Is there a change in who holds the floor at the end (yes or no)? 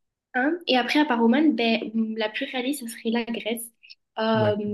no